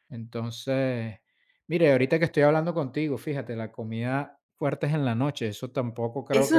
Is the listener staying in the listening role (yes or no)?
no